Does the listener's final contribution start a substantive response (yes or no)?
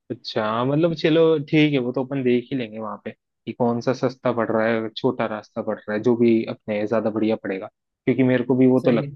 no